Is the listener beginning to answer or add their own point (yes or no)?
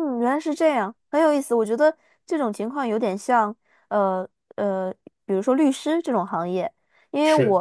no